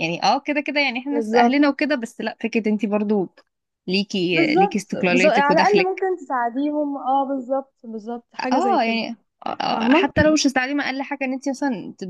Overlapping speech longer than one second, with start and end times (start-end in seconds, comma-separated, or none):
4.3-6.1